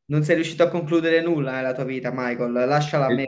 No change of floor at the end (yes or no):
no